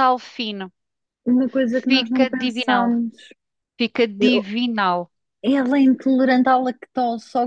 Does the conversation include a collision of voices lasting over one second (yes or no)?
yes